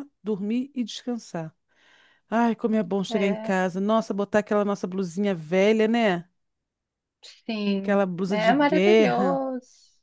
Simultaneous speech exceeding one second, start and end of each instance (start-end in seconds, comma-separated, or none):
7.8-9.4